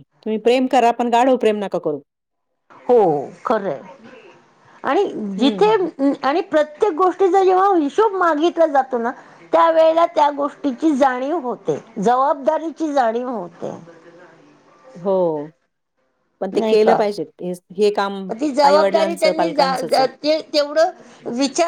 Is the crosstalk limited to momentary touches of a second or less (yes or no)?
yes